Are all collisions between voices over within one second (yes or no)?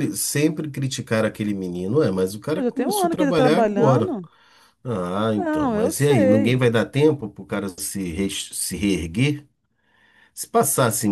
no